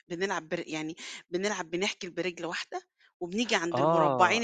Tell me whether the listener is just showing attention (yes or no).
yes